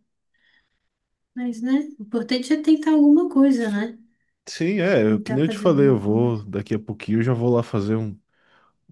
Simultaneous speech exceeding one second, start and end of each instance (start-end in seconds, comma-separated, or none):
5.1-6.4